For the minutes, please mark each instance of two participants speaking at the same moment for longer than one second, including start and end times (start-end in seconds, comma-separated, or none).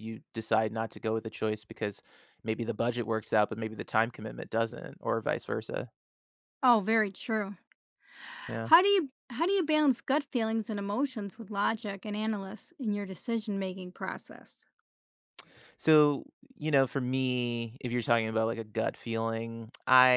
none